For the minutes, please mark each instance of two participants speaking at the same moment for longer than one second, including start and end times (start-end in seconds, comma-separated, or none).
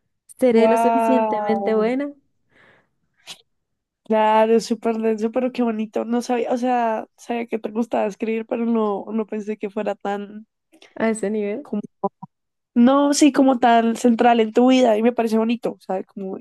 0.5-1.9